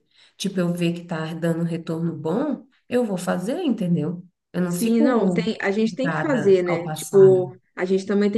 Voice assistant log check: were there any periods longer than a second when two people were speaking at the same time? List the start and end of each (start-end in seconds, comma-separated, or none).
4.7-7.5